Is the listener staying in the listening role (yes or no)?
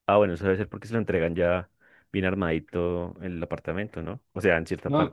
no